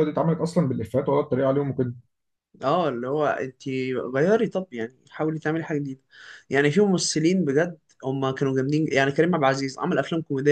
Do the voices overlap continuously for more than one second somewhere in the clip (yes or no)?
no